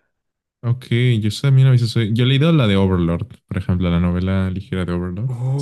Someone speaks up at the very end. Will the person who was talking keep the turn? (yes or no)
no